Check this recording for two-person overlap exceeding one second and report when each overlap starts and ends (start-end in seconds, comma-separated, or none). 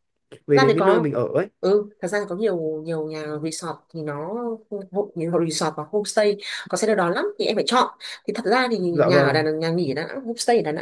none